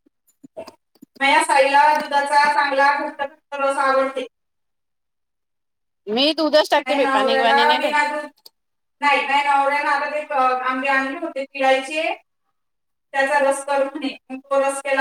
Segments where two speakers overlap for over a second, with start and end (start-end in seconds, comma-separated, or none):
6.4-8.1